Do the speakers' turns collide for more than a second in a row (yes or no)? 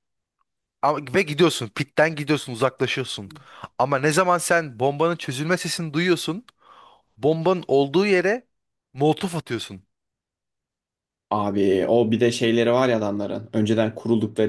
no